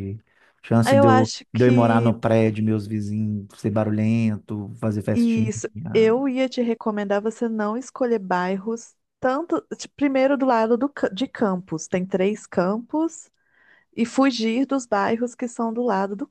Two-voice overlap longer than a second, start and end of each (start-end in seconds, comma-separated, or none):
0.8-2.1